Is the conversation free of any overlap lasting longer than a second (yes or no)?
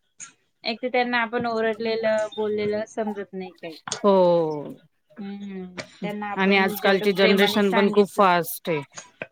no